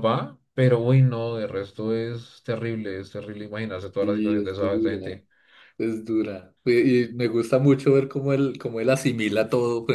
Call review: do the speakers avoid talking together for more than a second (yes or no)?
no